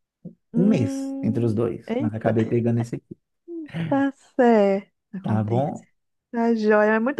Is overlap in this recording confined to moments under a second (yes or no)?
no